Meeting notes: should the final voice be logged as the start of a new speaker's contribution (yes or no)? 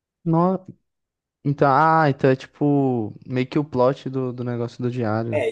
yes